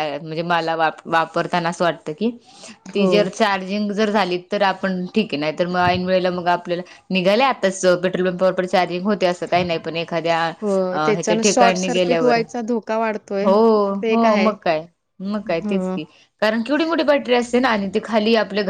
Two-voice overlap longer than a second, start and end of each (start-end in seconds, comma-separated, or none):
10.6-12.4